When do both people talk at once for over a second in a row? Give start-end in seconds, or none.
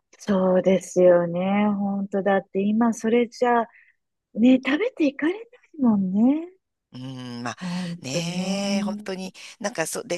8.0-9.3